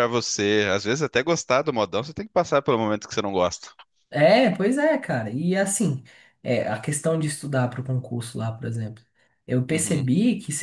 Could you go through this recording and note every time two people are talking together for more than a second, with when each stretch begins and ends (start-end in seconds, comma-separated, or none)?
none